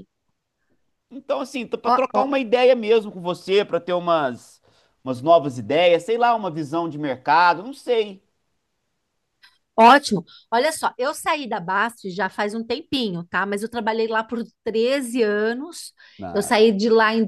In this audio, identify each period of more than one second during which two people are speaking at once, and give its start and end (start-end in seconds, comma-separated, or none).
none